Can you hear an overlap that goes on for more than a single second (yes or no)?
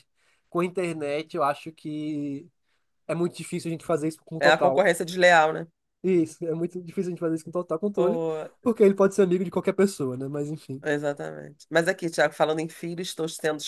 no